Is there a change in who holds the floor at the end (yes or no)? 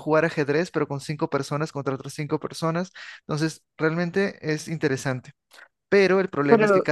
no